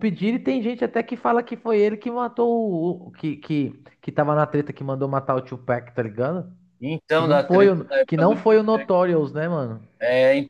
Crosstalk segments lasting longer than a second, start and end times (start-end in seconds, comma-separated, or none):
7.1-8.9